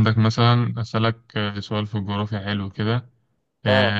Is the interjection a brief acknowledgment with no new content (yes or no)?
yes